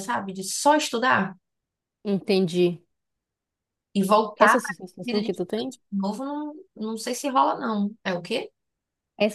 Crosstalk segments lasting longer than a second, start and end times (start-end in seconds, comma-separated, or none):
4.4-5.7